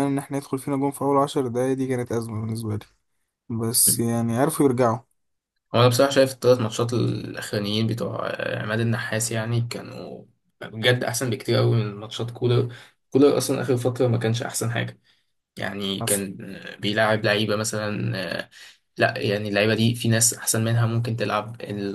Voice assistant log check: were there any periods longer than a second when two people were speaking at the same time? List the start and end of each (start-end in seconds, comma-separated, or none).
none